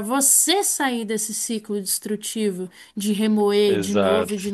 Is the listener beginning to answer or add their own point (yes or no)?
no